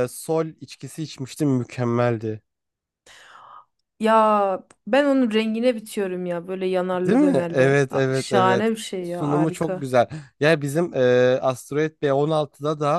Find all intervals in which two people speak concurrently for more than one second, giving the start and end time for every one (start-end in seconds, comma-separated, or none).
7.0-9.8